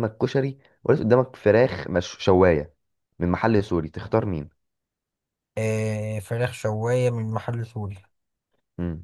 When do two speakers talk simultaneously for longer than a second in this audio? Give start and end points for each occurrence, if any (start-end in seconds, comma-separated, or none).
none